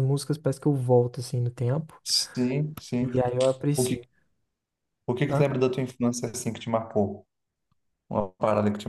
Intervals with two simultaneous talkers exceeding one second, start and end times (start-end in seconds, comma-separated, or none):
none